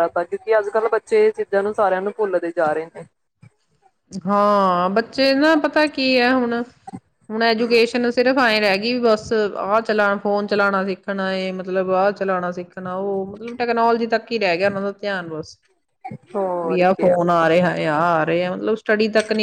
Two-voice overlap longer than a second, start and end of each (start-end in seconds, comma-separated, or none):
none